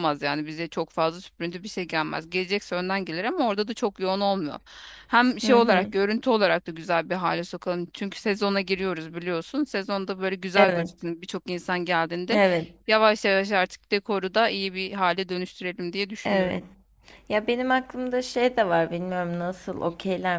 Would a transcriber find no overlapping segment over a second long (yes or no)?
yes